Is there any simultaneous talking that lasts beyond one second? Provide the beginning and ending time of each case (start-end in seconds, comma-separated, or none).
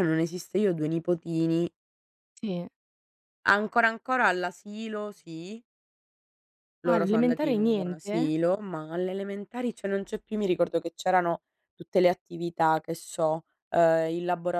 6.8-8.3